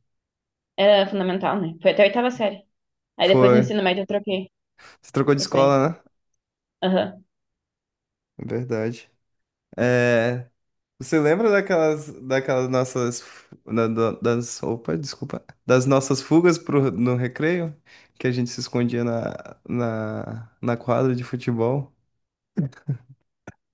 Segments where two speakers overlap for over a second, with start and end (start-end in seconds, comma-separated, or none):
none